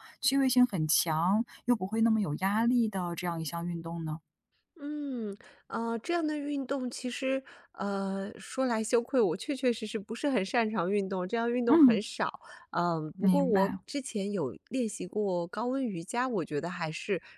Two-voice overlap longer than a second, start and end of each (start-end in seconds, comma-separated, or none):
none